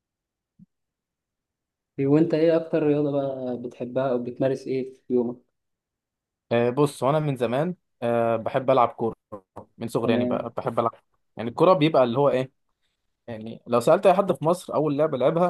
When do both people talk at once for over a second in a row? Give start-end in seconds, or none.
none